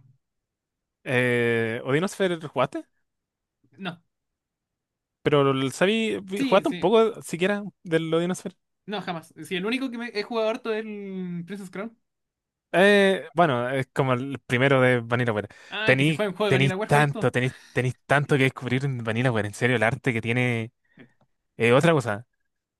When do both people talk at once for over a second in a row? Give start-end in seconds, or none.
15.8-17.3